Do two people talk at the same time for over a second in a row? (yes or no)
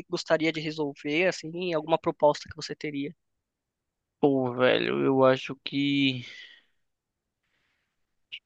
no